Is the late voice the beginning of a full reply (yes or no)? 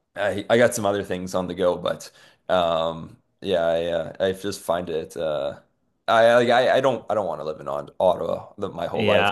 yes